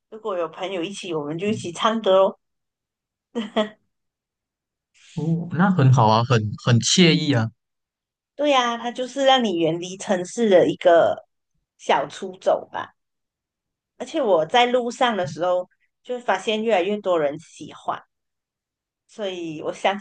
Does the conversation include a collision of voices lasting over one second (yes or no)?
no